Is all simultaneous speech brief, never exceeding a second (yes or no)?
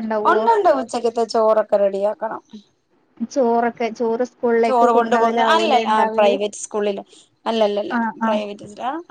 no